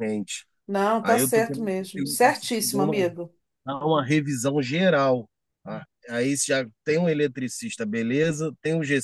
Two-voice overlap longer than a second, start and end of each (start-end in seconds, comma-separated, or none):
1.0-3.0